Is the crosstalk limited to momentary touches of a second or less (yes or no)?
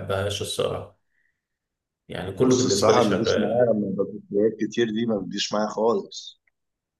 no